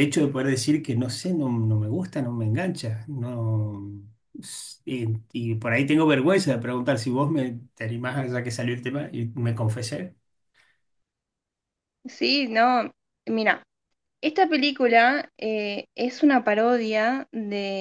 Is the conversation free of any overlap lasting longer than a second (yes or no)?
yes